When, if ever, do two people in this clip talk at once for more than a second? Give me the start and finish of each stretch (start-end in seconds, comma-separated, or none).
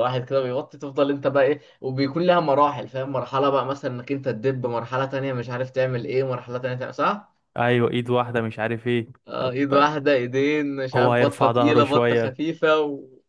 10.9-12.3